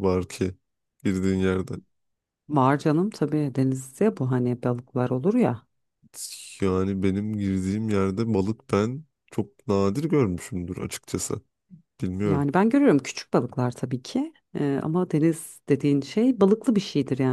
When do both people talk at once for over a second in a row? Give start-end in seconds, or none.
none